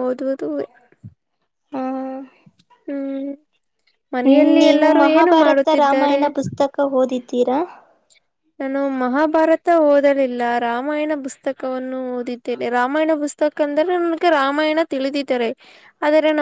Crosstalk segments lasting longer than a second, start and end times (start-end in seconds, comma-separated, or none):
4.2-6.2